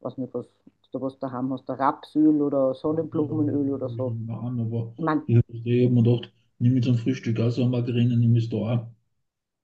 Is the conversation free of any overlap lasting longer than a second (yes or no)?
yes